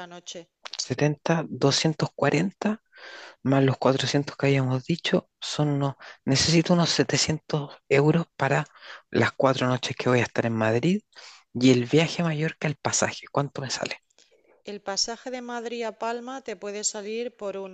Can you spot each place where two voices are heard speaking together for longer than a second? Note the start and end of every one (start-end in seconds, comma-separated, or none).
none